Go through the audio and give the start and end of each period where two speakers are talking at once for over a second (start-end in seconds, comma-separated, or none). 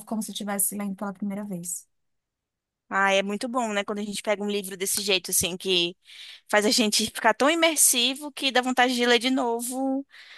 none